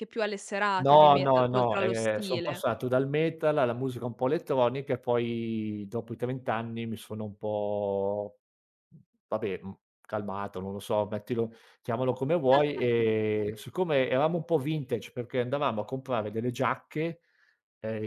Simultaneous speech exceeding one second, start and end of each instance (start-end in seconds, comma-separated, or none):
0.8-2.6